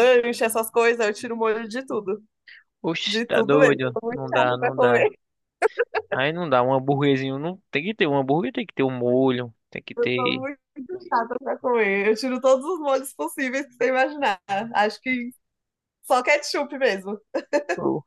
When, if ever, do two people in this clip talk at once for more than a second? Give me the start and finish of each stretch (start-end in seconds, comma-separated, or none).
3.0-5.1